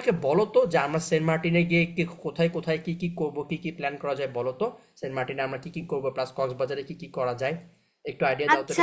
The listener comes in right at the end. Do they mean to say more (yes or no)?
yes